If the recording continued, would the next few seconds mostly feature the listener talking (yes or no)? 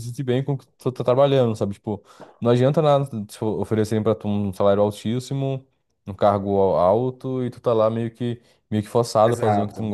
yes